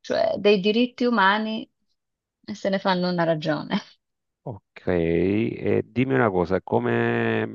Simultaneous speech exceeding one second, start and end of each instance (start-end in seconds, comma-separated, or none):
none